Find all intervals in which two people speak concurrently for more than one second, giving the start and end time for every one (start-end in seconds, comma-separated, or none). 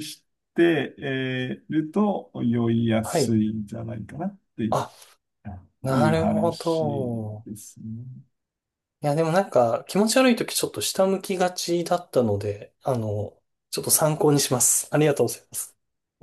5.9-7.5